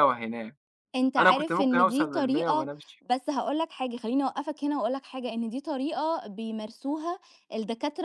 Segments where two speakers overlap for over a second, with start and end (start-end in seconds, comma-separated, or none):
1.2-2.7